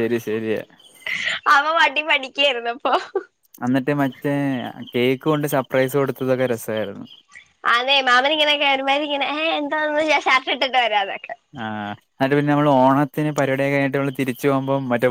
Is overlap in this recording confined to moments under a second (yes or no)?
yes